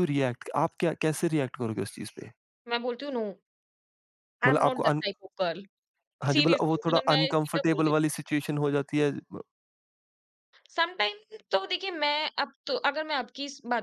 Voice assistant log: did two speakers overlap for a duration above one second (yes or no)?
yes